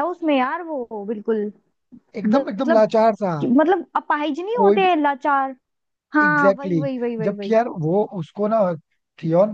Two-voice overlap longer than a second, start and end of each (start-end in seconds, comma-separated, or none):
6.2-7.6